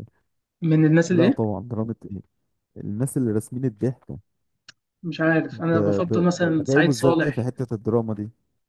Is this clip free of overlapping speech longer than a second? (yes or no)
no